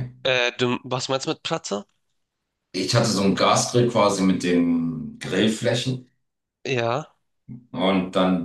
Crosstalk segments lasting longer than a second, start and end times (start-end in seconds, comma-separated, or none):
none